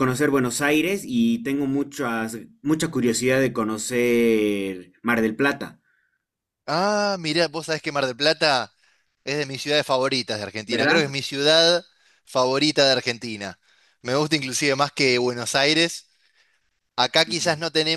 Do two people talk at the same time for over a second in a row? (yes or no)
no